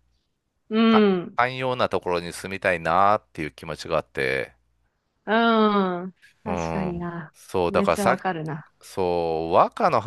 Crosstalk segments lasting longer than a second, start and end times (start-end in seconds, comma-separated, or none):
6.4-8.2